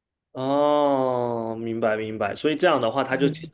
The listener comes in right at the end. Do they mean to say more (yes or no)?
no